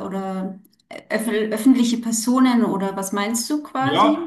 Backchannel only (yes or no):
no